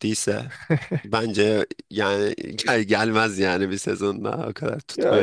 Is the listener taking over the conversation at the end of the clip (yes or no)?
yes